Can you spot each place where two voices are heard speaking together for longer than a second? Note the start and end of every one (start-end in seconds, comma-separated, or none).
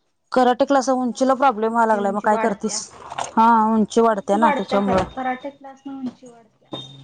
0.9-2.8